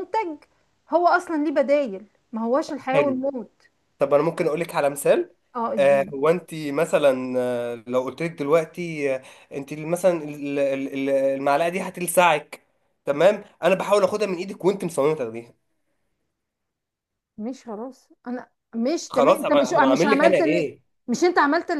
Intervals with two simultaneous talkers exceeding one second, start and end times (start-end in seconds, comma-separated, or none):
19.1-20.8